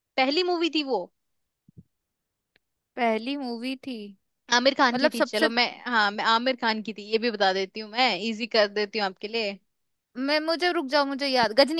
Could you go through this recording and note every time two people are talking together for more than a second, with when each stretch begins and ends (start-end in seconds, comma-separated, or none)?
none